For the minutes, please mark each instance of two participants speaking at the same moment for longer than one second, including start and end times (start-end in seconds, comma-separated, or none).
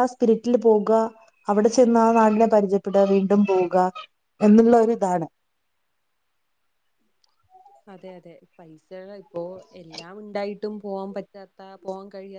none